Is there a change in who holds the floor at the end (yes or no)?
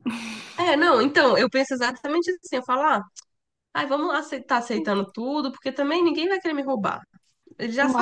no